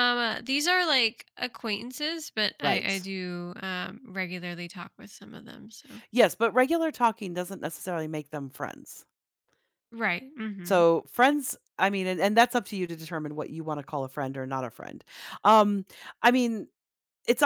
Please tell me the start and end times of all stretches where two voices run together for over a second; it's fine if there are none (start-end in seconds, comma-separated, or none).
none